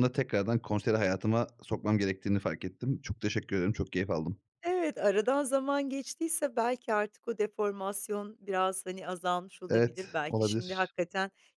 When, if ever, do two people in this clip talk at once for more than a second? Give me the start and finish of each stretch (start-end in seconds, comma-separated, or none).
9.7-10.9